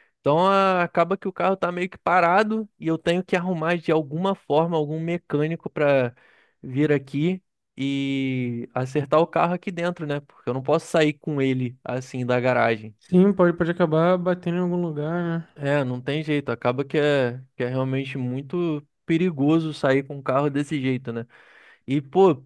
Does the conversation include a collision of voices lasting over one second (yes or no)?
no